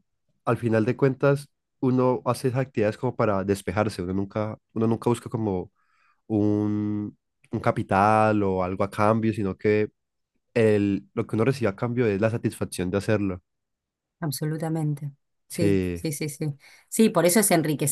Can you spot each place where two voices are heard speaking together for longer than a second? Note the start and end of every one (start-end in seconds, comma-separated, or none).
none